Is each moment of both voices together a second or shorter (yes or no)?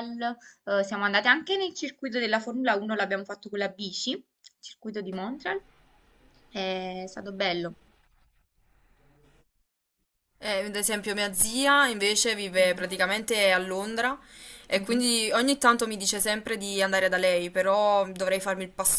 yes